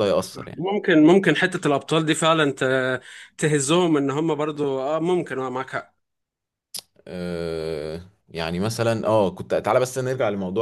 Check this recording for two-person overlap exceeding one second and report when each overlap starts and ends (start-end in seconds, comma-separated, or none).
none